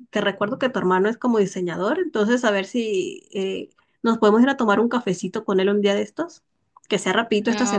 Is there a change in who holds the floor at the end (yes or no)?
no